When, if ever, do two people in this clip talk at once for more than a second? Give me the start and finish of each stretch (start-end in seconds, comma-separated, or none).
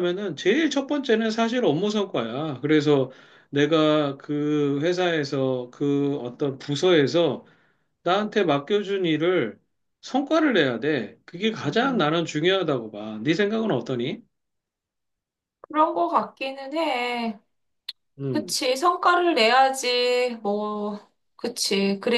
none